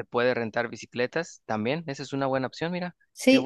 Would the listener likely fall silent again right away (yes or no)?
no